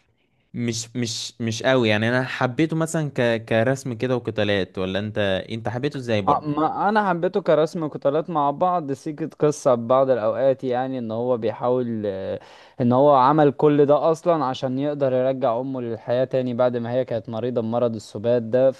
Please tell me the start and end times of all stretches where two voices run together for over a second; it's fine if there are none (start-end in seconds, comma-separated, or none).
none